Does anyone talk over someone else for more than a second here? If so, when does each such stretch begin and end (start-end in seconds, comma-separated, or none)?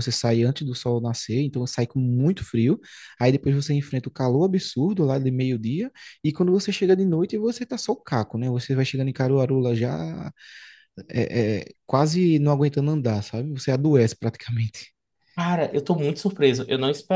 none